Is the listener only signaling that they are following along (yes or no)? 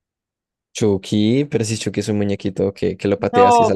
no